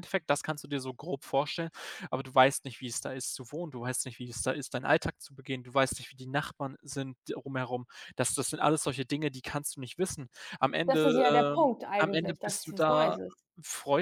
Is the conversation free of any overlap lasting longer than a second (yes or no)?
no